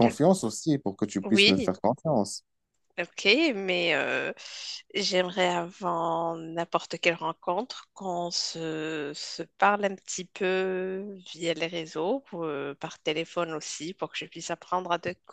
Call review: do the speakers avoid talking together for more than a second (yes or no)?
yes